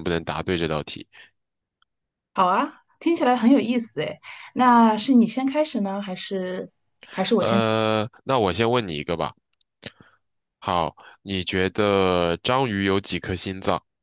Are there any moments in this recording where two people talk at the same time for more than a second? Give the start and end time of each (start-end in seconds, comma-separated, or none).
none